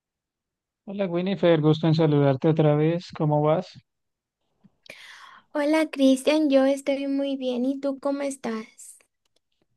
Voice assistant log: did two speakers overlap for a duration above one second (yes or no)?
no